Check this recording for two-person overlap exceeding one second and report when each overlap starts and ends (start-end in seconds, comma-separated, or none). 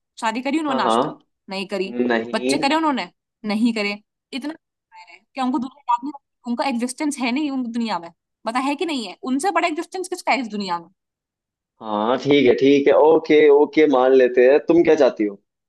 none